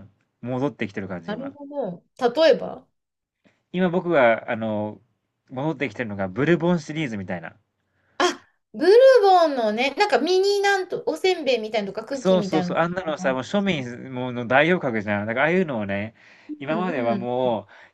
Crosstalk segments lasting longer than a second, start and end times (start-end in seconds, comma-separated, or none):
12.1-13.4